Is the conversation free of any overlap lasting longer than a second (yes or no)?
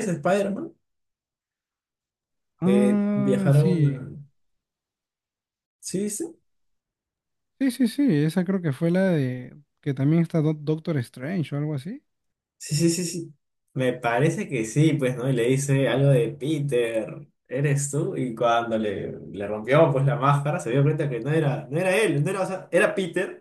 no